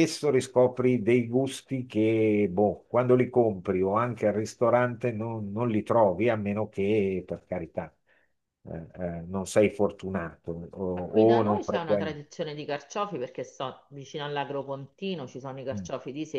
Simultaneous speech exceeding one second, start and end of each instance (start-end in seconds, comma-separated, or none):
10.9-12.2